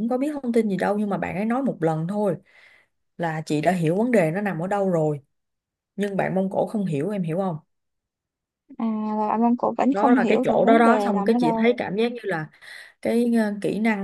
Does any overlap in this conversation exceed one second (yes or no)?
yes